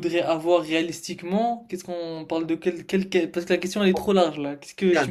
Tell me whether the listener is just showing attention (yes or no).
no